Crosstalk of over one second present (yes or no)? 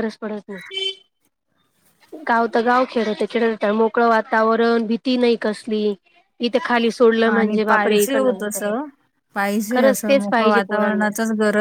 yes